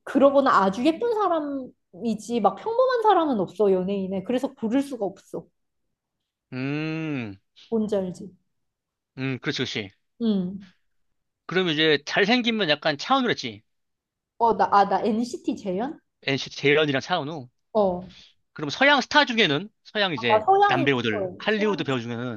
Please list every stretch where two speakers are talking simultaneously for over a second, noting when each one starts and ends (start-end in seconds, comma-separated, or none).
20.2-21.8